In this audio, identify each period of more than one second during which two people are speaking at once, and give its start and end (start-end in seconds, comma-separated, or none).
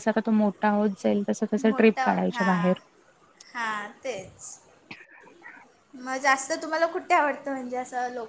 none